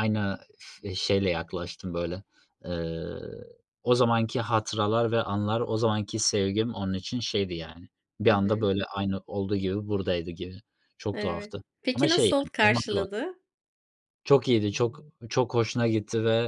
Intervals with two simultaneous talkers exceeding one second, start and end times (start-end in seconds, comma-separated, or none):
11.1-13.0